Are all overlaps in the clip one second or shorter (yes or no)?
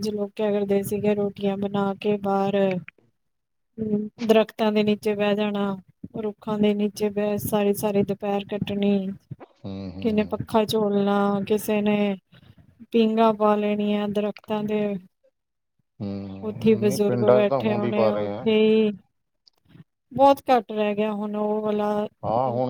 no